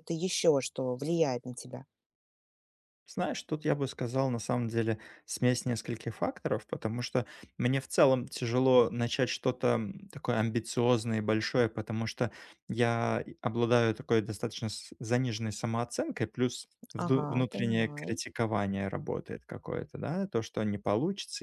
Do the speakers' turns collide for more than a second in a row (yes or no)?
yes